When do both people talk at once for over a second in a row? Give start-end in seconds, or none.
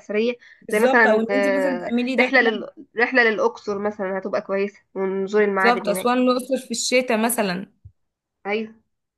0.7-2.6